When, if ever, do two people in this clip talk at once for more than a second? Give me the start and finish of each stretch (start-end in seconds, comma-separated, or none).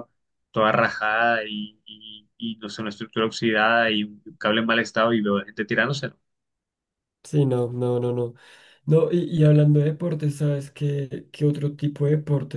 none